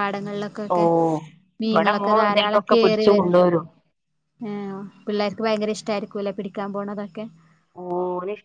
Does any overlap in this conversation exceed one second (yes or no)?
yes